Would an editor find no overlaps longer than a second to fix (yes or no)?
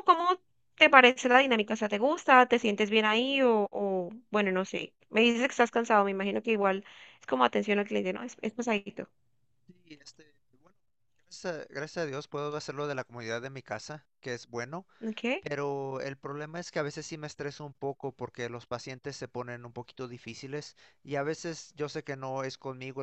yes